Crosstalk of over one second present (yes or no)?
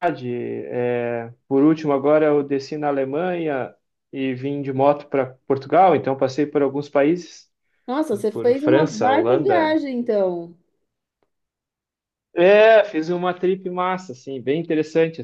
yes